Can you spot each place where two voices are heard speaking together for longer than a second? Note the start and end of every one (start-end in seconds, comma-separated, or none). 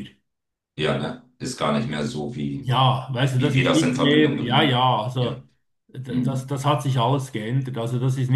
3.4-5.4